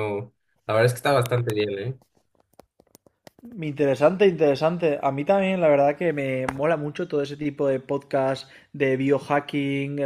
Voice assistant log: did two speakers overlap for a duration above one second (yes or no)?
no